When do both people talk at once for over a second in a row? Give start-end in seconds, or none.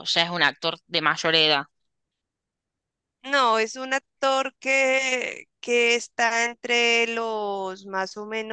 none